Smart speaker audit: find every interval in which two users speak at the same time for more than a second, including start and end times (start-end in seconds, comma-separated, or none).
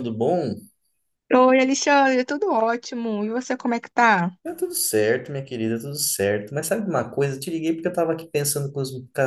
none